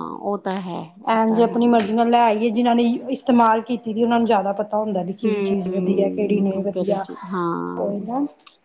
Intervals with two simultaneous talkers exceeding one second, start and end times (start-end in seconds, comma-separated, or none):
5.2-7.0